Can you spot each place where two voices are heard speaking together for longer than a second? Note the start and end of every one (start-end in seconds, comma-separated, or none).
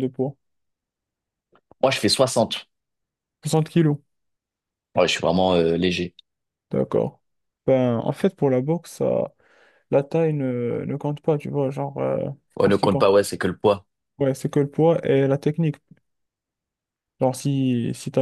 none